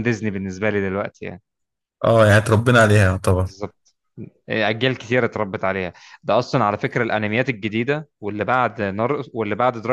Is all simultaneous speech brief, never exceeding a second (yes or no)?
yes